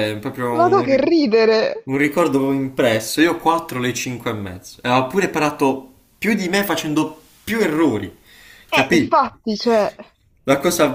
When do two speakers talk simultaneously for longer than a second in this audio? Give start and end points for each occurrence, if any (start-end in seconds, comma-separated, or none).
none